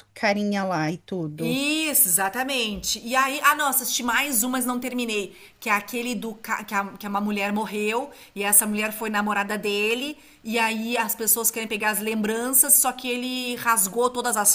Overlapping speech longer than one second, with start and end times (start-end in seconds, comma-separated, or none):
none